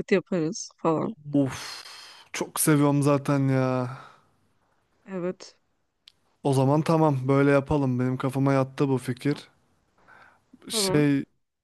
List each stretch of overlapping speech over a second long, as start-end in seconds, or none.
none